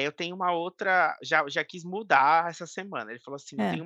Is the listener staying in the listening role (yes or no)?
yes